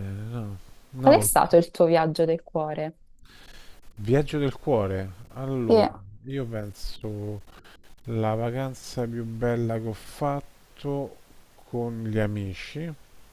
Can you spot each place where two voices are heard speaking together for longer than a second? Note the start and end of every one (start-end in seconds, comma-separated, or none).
none